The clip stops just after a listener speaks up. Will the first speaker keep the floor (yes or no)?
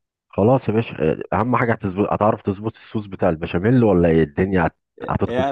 no